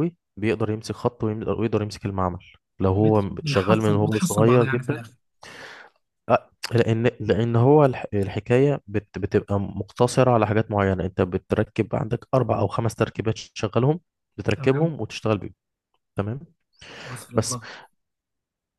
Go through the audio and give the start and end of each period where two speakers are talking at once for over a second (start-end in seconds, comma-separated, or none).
3.0-5.0